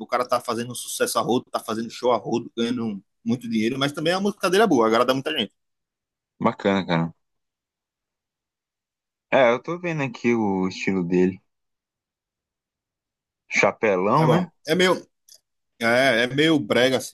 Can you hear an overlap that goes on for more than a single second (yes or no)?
no